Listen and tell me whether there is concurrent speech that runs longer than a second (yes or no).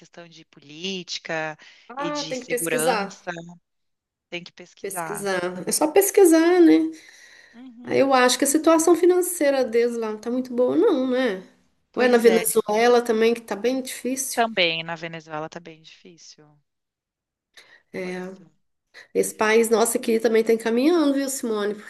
yes